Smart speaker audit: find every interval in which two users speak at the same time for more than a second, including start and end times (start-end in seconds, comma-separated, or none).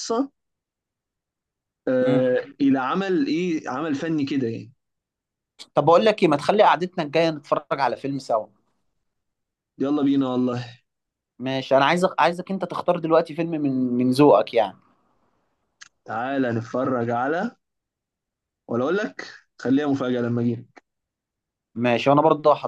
none